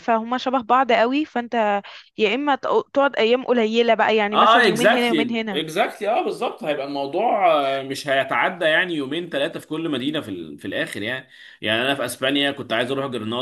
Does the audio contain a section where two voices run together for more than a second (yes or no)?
yes